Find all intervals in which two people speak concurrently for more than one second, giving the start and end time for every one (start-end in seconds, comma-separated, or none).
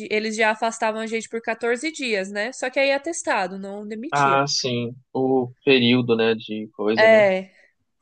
none